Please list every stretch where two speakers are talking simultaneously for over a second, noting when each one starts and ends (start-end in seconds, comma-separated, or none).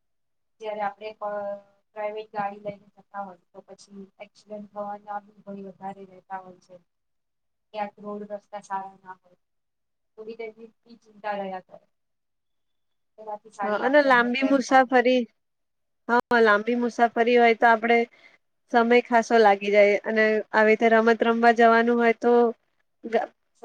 13.6-14.9